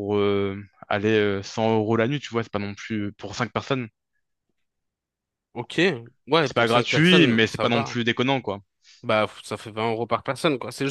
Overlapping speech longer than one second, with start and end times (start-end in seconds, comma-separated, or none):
6.4-8.0